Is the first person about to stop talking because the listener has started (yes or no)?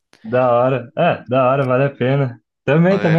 no